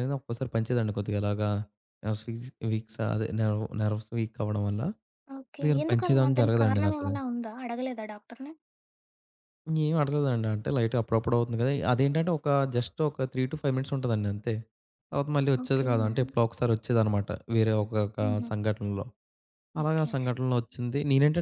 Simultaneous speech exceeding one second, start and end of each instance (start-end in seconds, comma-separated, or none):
5.5-7.1